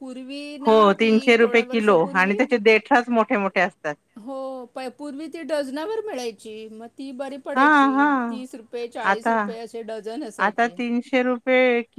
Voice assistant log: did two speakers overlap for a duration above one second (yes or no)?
yes